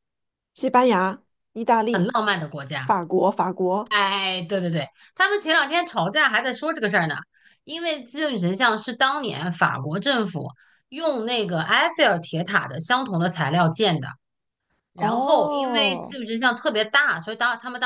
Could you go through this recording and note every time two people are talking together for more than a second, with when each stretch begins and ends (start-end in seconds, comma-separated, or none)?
14.9-16.2